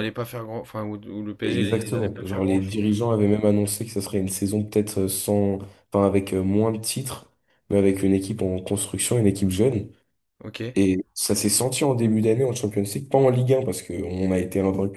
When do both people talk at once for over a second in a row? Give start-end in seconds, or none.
1.4-2.9